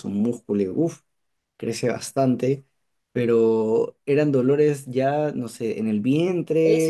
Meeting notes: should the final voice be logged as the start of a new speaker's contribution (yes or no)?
yes